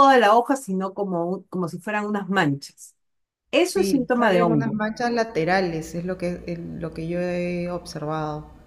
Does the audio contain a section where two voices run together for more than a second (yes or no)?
yes